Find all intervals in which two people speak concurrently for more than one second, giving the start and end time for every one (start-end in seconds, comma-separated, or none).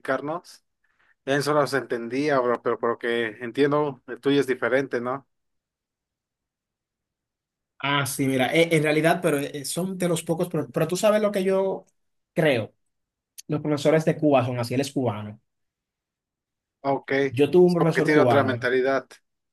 17.3-18.7